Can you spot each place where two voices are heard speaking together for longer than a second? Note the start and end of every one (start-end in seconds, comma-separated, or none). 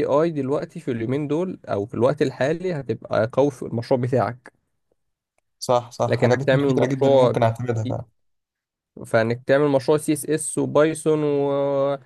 6.1-7.3